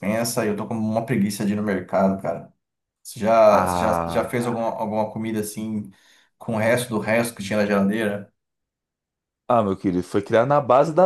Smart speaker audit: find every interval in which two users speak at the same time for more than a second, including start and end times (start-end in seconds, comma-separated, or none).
3.5-4.8